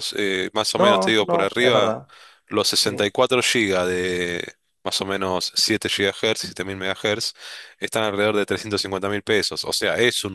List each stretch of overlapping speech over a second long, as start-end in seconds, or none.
0.8-2.0